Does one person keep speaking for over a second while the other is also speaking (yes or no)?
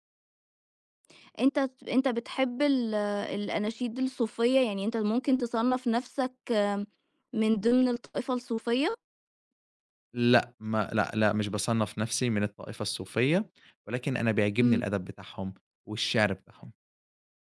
no